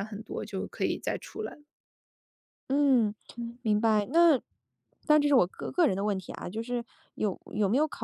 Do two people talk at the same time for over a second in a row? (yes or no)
no